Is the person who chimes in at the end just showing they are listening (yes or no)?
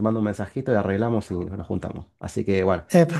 yes